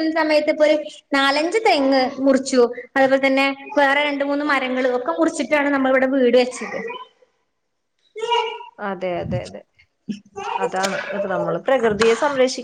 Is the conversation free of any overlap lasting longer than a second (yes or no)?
yes